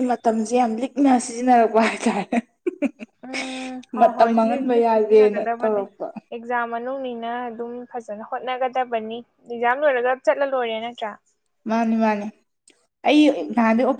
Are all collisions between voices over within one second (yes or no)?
no